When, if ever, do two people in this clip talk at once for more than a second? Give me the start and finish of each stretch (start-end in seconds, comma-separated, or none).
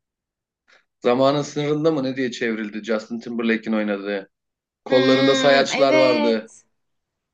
4.9-6.5